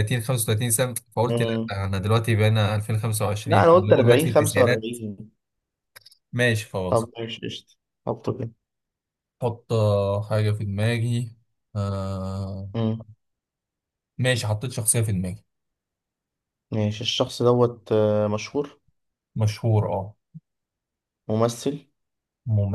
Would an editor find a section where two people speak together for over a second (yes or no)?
yes